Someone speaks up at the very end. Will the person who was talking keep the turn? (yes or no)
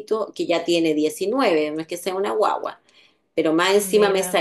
yes